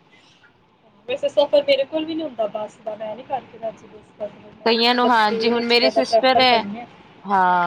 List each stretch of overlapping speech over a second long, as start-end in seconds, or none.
4.7-6.6